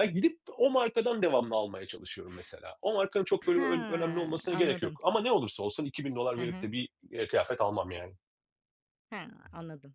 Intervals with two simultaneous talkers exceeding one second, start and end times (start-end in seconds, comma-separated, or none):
3.5-5.0